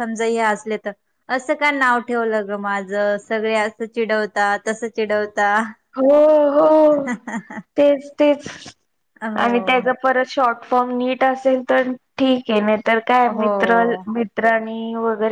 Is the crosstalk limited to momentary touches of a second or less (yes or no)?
yes